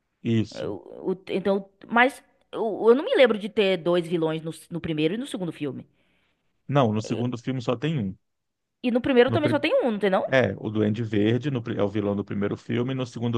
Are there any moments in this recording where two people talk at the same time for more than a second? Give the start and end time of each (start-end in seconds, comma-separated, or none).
none